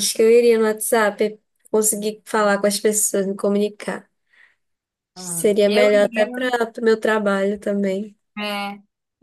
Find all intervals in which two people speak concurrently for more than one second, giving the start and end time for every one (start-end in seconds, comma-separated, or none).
5.2-6.6